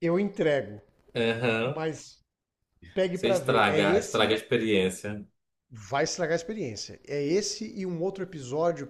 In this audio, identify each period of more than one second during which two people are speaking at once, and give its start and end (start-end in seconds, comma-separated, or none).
3.1-4.4